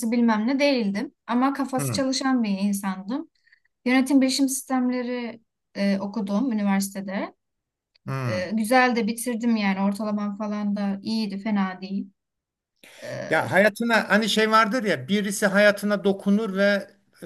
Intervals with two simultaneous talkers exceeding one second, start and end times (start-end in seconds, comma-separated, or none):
none